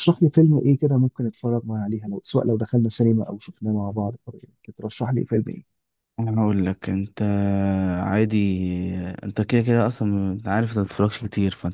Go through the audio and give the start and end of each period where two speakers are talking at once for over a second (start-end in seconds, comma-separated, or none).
none